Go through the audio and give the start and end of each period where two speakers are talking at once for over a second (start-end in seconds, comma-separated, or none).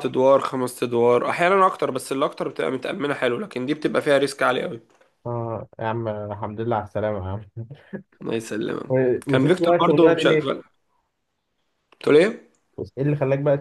8.9-10.6